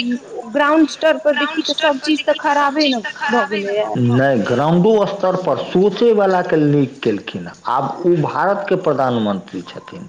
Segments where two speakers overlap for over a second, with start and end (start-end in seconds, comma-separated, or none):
1.3-3.9